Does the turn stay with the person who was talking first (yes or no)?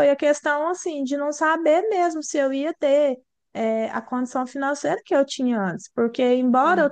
yes